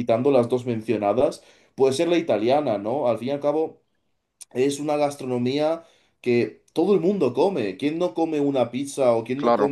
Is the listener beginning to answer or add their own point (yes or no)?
no